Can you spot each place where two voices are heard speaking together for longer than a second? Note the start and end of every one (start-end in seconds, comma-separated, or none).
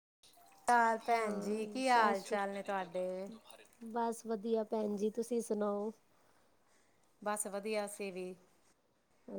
1.1-2.4